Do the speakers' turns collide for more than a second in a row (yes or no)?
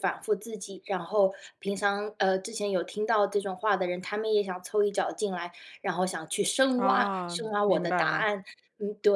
yes